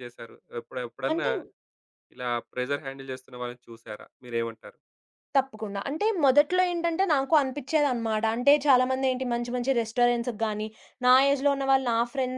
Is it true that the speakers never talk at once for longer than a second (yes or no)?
yes